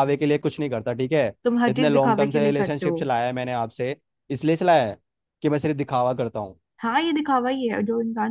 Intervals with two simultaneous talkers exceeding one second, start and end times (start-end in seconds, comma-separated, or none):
1.7-3.1